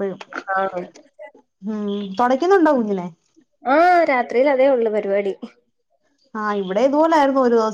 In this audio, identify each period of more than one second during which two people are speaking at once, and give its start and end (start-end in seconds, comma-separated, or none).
none